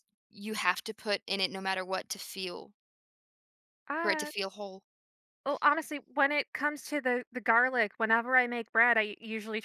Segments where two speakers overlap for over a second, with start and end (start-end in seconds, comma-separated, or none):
none